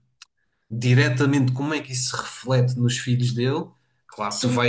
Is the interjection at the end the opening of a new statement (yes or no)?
no